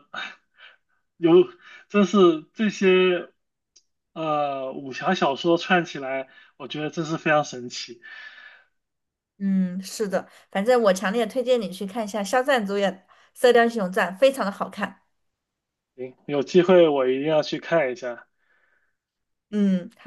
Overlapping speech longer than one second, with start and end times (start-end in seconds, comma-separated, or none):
none